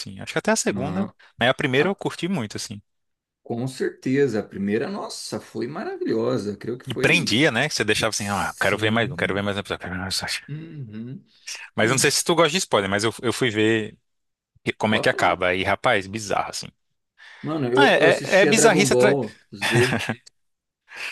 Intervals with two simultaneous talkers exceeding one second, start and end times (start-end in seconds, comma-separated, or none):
8.1-9.4, 17.8-19.2